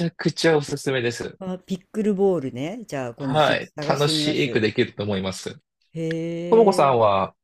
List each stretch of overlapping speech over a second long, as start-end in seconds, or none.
3.2-4.7